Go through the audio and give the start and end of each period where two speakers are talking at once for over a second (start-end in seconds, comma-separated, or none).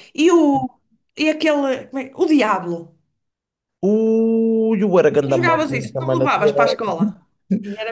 5.3-6.5